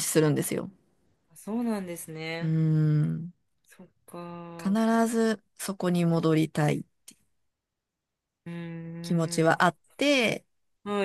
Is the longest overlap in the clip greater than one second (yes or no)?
no